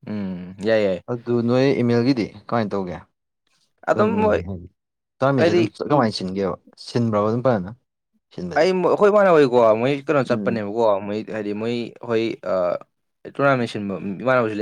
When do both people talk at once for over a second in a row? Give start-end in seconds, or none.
none